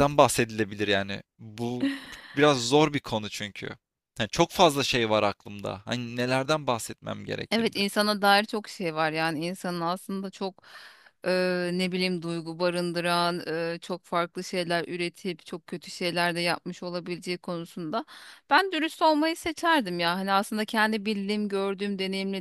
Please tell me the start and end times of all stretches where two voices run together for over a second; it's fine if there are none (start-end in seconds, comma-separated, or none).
none